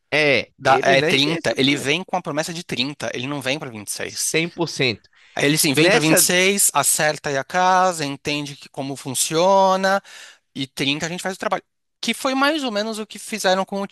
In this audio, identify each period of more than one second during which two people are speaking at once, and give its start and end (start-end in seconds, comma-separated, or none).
0.6-1.9